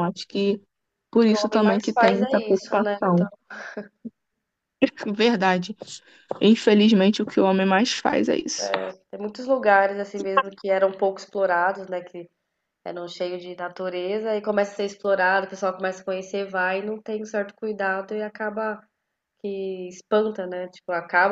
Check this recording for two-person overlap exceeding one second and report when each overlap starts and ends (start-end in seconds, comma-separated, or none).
1.3-3.3